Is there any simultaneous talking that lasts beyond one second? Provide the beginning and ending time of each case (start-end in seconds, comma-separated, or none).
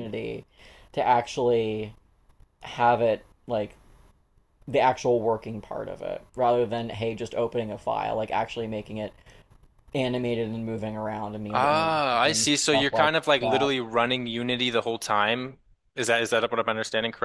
11.5-13.7